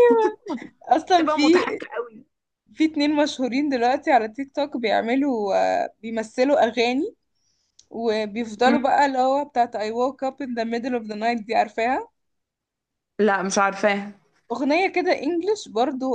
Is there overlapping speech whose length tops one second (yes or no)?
no